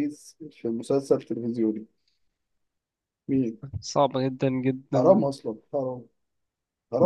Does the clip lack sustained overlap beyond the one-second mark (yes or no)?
yes